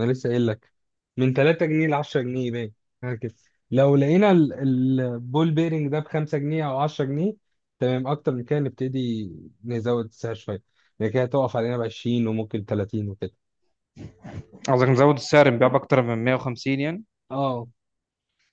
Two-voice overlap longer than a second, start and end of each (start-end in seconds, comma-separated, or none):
none